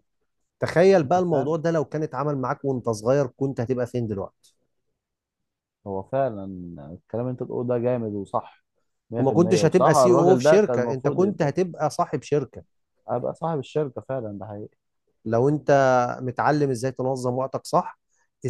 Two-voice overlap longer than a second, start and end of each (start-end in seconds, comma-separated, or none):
9.2-11.2